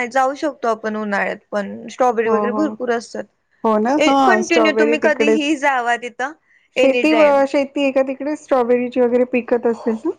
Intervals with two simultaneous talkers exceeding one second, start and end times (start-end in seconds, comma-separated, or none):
4.3-5.5